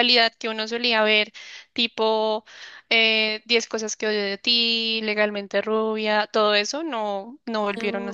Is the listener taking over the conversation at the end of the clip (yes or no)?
yes